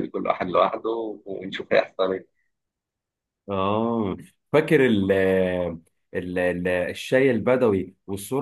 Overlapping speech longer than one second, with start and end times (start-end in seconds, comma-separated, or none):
none